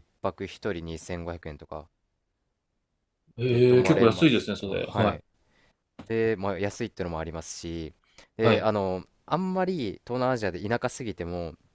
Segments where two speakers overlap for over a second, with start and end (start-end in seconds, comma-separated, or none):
3.5-5.2